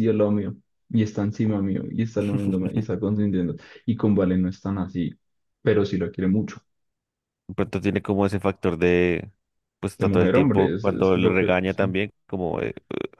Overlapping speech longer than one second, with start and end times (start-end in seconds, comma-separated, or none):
10.0-12.0